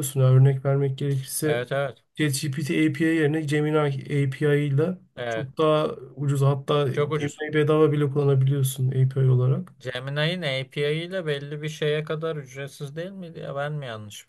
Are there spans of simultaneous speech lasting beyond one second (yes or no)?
no